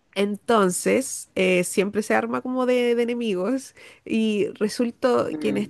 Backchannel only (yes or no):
yes